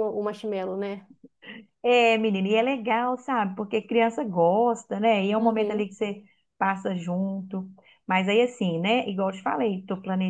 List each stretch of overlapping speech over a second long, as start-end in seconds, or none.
none